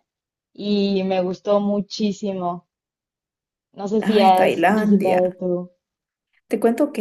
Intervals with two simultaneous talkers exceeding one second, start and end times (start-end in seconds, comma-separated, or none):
4.0-5.4